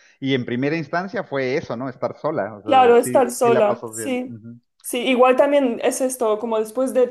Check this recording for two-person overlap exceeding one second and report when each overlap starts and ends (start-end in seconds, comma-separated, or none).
2.6-4.3